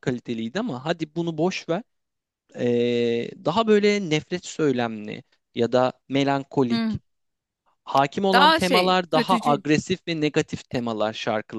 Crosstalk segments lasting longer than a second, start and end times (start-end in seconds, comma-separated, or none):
8.3-9.6